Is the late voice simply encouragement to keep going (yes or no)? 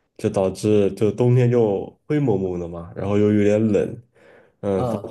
yes